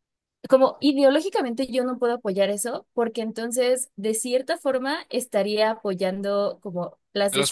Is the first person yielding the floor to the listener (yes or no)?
no